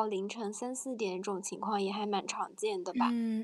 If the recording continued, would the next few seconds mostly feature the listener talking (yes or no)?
yes